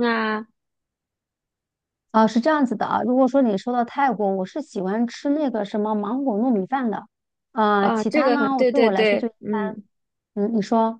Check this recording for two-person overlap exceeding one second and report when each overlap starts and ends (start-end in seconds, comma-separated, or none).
7.8-9.8